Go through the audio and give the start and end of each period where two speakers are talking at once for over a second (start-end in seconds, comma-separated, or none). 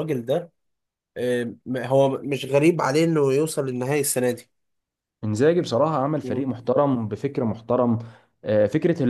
none